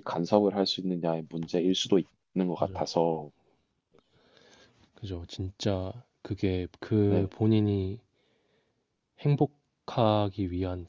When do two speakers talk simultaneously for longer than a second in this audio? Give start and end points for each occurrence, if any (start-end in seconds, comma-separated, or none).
none